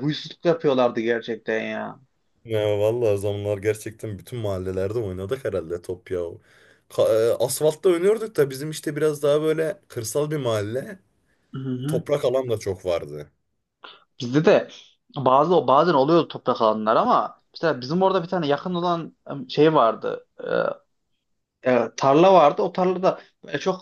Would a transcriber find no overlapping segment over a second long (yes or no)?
yes